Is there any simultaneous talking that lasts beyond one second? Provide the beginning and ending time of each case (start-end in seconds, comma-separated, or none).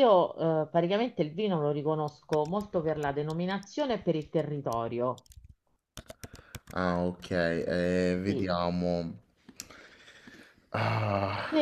none